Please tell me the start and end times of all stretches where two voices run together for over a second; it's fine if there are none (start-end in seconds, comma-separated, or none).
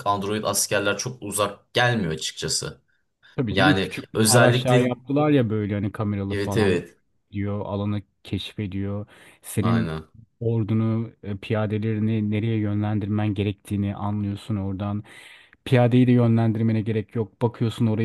3.5-4.9